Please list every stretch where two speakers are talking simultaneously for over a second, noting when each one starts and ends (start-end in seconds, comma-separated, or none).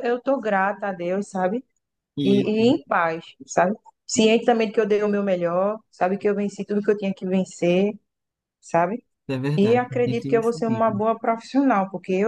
9.6-10.8